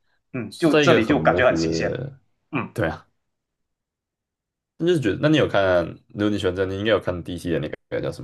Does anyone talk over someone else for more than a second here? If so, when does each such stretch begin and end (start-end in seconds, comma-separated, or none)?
0.5-2.0